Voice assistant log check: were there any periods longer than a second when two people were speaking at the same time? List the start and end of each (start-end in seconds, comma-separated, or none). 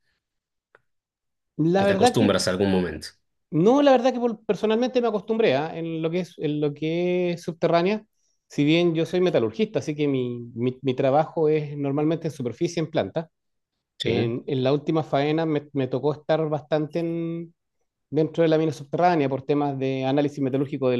none